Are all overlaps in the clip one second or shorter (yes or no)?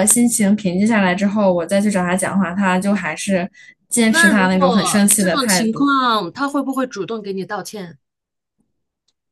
no